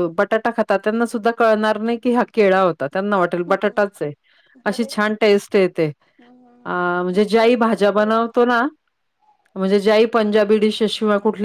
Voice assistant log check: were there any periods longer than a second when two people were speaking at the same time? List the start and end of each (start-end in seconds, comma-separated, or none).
7.4-8.6